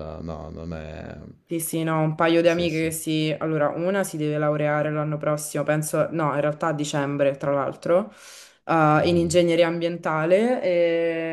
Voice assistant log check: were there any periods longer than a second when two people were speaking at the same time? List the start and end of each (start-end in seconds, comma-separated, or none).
none